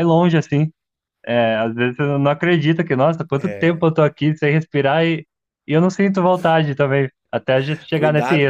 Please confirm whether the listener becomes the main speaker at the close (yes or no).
yes